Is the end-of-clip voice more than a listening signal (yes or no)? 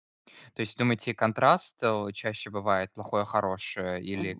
yes